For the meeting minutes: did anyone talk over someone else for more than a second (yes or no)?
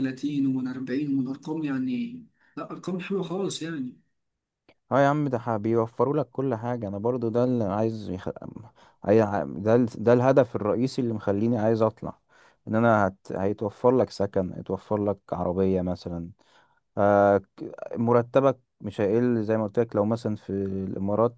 no